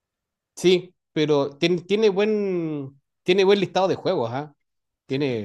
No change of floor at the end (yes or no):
yes